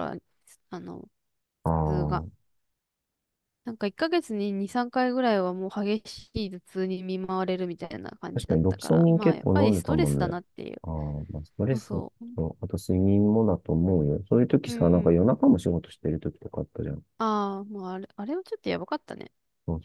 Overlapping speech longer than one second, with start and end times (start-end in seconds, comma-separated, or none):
8.3-10.3